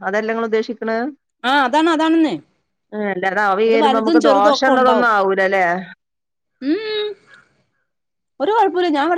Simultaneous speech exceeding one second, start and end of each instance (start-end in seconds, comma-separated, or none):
3.7-5.1